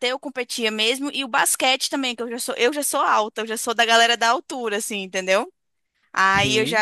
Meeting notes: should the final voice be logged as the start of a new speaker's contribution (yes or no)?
no